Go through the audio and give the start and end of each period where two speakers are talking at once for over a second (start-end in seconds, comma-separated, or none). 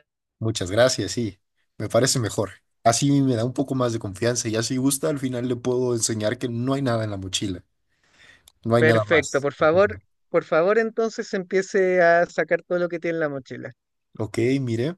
8.8-10.0